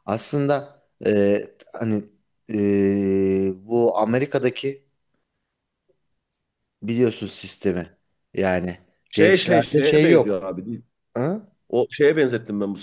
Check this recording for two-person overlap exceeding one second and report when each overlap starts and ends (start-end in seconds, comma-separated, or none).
9.1-10.5